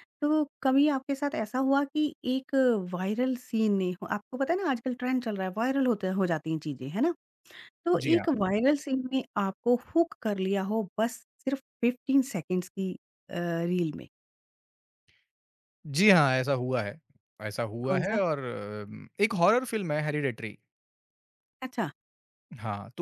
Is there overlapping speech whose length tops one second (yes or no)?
no